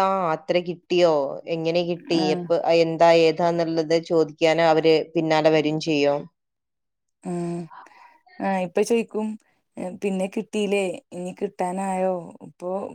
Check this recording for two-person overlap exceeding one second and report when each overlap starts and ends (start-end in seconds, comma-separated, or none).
none